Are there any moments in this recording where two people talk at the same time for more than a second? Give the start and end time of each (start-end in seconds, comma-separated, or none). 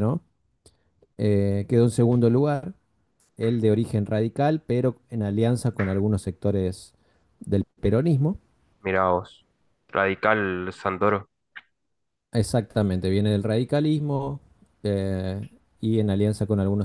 none